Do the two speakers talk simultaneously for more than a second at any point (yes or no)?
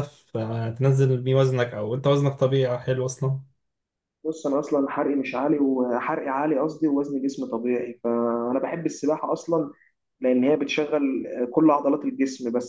no